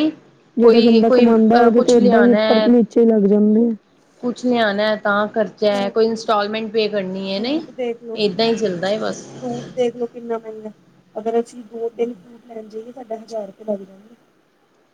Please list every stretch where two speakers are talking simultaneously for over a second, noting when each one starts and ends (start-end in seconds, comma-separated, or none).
0.6-2.7